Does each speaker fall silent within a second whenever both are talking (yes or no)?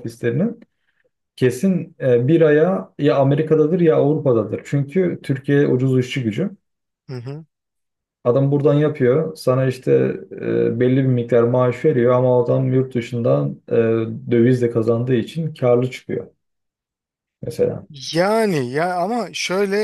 yes